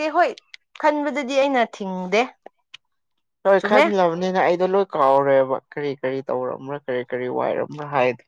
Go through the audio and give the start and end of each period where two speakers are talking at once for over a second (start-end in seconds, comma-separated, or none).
none